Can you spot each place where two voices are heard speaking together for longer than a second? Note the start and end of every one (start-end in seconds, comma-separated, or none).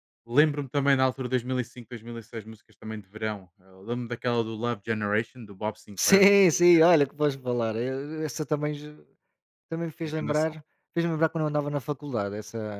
none